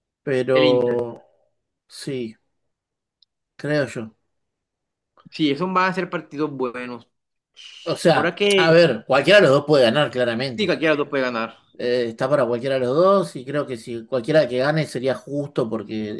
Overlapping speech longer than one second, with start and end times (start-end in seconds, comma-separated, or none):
none